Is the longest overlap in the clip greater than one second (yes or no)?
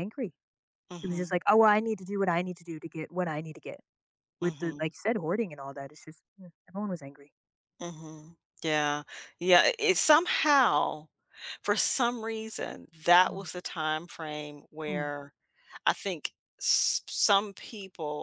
no